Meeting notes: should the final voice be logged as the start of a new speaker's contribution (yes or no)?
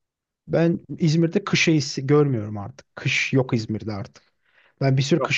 no